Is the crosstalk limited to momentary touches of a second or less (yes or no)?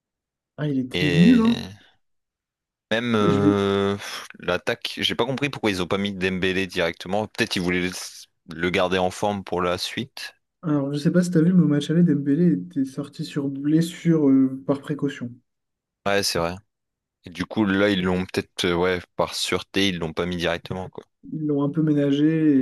yes